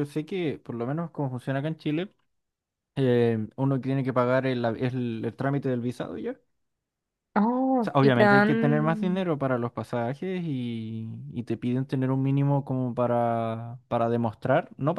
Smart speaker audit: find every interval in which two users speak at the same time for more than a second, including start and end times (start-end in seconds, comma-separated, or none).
7.8-9.2